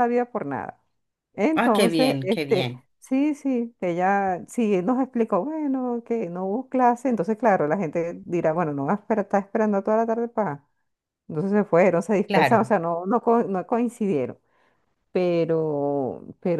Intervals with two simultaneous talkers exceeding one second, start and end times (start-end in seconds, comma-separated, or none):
1.5-2.9